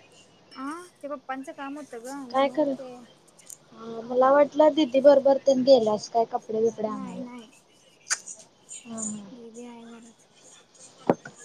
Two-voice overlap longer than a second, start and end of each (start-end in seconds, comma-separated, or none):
none